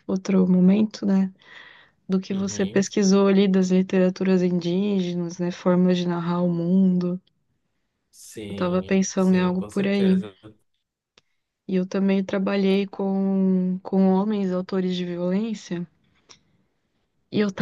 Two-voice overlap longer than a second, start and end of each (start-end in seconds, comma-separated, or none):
8.5-10.2